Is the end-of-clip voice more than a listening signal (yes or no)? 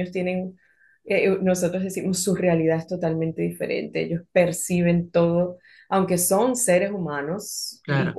no